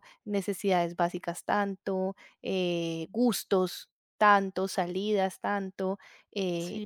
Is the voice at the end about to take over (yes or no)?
no